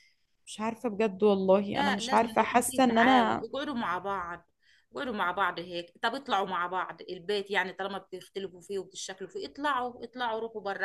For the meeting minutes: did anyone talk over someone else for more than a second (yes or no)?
yes